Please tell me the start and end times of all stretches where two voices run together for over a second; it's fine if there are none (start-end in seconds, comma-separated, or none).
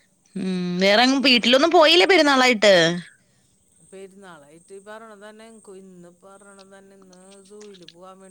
none